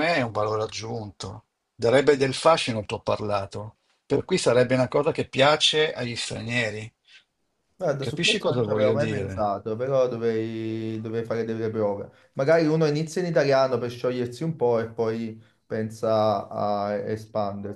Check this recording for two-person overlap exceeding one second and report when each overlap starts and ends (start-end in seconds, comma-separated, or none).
8.0-9.5